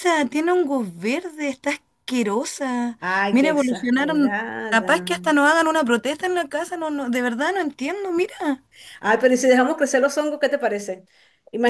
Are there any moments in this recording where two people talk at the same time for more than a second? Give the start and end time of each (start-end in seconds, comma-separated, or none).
3.0-4.8